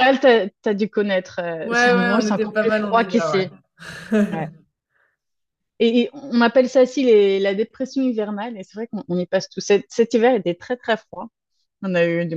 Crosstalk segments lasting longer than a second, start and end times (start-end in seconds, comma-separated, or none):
1.6-3.5